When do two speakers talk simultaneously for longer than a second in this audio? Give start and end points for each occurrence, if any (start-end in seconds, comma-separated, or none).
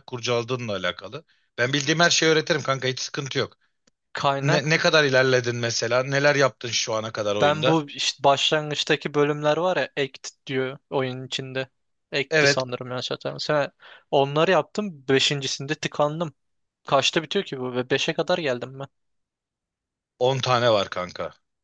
none